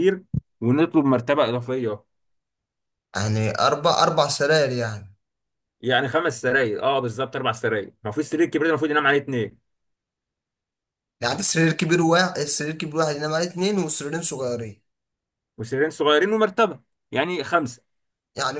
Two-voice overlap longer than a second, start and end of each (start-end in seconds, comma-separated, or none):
none